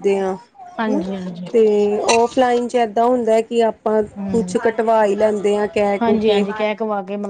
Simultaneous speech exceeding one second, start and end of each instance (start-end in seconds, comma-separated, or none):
none